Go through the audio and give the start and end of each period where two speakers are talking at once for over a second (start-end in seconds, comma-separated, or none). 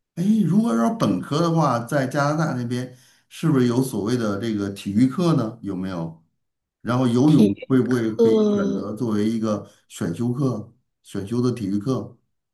7.2-8.9